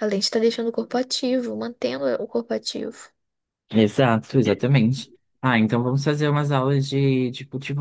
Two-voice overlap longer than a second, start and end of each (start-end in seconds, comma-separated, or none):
none